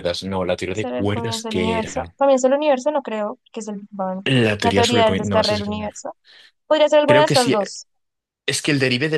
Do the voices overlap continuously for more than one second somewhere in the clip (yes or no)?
yes